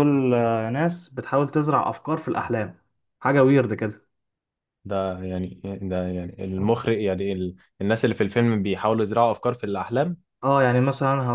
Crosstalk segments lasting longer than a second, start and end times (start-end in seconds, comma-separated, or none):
none